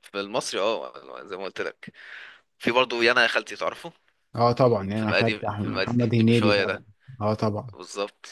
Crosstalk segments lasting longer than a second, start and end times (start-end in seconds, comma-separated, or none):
5.0-6.8